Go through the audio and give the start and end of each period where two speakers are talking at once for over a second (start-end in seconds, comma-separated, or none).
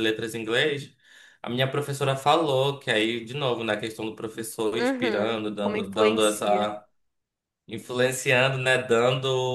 4.8-6.7